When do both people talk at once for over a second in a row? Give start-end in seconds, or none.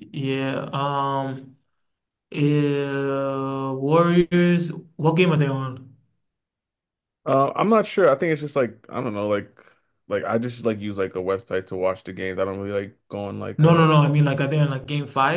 none